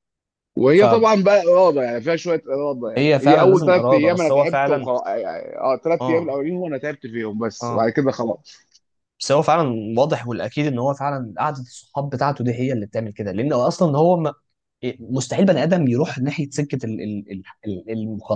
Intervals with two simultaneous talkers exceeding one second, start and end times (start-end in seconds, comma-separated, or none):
3.2-4.9